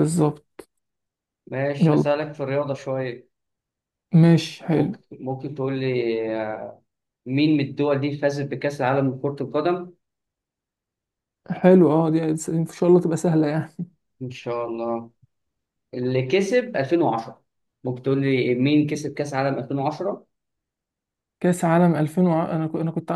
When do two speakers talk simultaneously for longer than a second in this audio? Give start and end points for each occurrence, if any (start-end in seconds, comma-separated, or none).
none